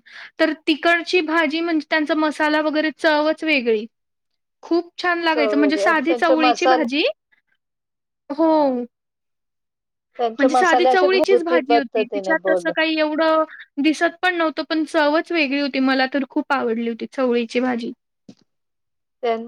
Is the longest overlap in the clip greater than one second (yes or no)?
yes